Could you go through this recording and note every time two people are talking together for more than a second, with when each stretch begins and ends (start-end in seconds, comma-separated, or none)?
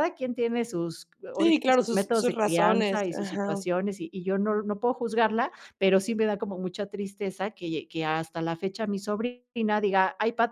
1.4-3.6